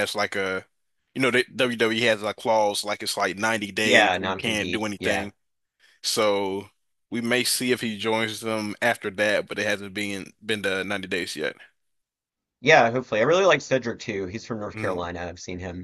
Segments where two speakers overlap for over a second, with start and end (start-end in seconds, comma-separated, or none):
3.8-5.3